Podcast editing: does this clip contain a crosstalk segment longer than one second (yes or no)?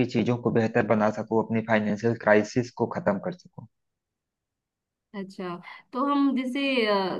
no